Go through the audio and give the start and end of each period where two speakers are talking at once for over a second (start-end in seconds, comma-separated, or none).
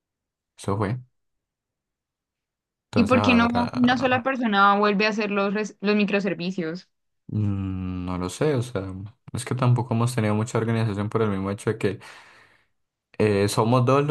2.9-4.2